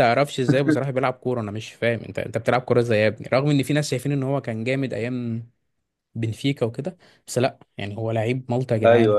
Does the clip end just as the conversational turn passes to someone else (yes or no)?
no